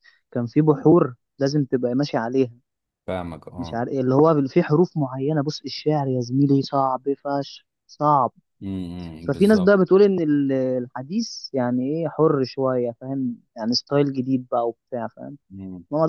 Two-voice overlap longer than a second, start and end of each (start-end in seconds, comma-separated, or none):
none